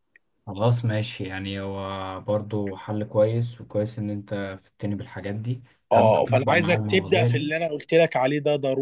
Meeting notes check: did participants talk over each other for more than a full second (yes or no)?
yes